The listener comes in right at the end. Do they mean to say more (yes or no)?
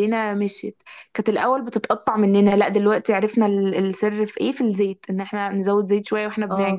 no